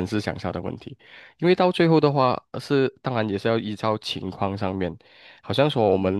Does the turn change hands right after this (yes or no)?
no